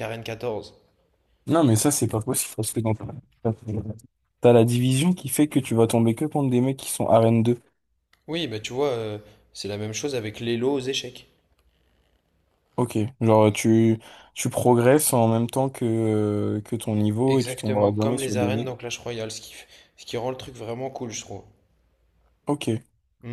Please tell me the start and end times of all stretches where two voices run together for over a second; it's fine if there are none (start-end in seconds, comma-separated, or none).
17.3-18.8